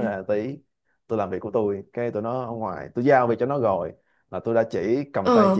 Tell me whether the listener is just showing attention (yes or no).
yes